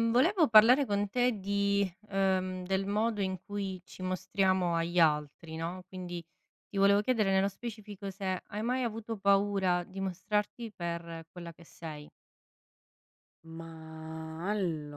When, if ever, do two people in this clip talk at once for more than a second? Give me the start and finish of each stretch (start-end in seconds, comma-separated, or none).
none